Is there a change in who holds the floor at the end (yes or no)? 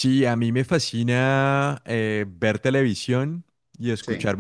no